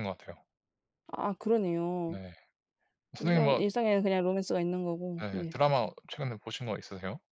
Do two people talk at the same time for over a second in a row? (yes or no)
no